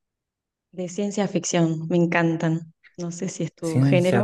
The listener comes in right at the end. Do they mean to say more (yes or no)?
yes